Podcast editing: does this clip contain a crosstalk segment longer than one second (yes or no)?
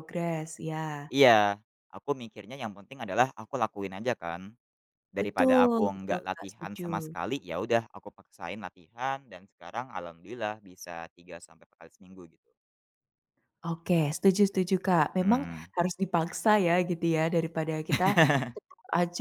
yes